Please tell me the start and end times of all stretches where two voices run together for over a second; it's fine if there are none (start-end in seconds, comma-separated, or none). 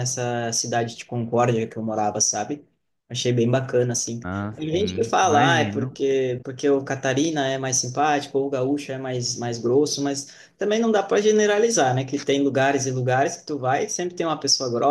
4.5-6.0